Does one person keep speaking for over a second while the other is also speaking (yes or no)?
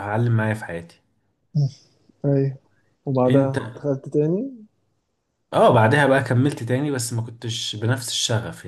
no